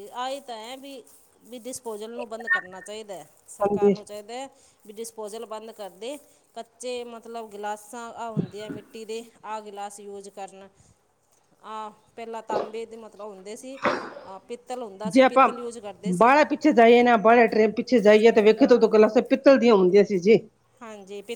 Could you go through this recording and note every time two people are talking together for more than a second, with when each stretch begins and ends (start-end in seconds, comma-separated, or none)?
none